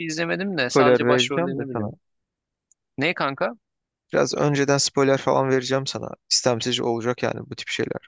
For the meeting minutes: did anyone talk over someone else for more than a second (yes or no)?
yes